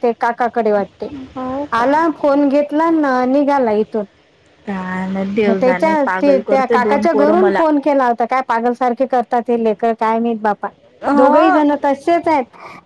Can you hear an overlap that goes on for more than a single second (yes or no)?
yes